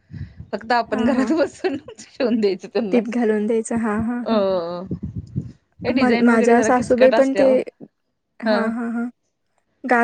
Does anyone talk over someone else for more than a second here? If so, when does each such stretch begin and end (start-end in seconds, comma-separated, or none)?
6.0-7.8